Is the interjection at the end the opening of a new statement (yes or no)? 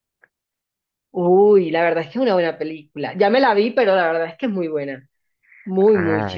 yes